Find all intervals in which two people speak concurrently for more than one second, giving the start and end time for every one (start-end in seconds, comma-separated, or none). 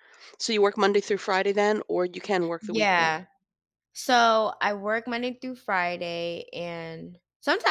none